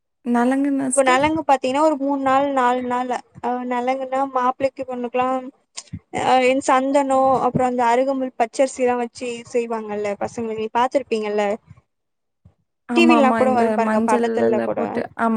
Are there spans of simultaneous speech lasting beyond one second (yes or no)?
no